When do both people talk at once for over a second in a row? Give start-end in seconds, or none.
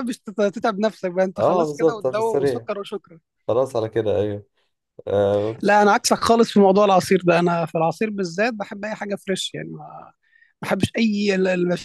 1.4-2.7